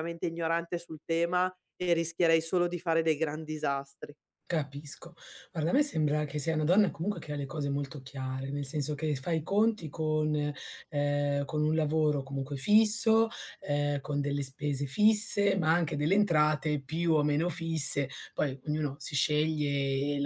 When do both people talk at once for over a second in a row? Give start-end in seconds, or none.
none